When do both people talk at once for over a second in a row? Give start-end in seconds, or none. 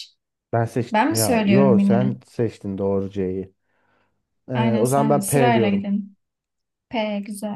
0.9-2.1, 4.5-5.9